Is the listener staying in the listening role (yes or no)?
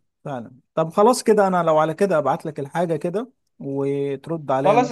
no